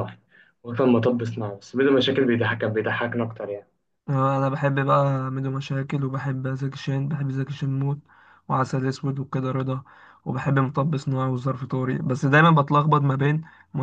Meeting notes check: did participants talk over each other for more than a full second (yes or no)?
no